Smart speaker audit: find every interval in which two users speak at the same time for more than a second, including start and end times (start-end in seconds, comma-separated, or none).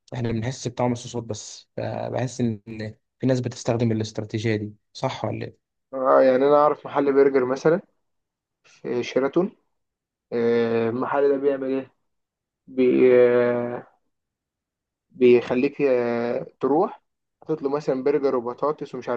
none